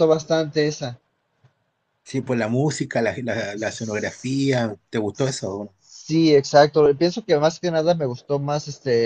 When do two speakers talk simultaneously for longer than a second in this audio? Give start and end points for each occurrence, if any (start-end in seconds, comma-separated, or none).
none